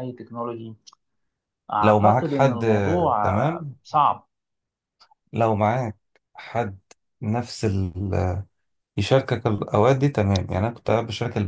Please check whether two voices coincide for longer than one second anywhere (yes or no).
yes